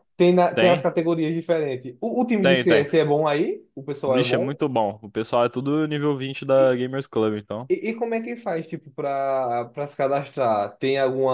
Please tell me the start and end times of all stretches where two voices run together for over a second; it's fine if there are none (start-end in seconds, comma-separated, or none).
none